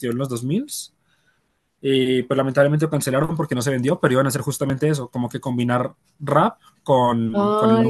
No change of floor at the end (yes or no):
no